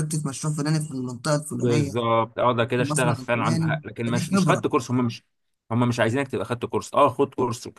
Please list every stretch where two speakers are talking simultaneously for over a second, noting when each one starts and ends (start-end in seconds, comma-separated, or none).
2.6-4.7